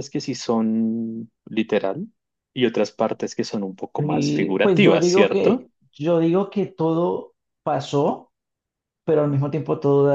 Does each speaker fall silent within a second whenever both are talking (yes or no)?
no